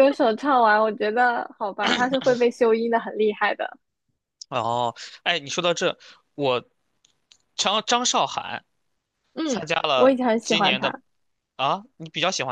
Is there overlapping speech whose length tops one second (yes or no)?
yes